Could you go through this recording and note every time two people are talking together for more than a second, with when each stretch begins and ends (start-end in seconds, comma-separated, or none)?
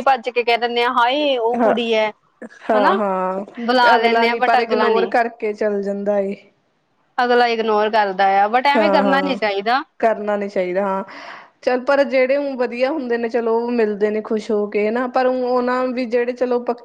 3.7-5.1